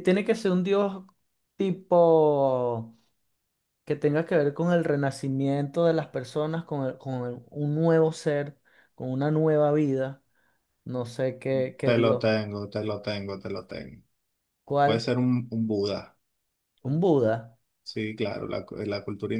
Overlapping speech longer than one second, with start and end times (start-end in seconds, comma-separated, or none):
none